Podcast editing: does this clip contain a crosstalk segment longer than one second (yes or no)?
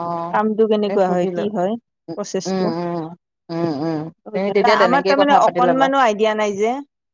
yes